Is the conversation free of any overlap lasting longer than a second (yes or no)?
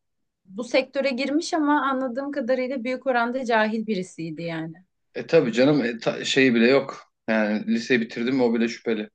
yes